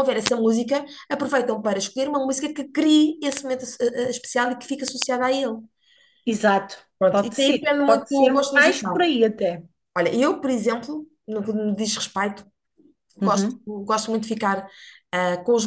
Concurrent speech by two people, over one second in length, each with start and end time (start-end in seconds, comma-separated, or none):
7.0-9.1